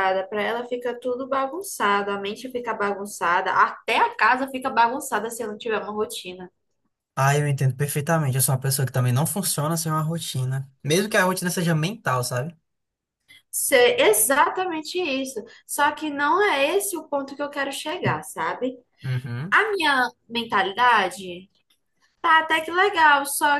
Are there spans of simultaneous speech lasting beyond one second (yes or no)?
no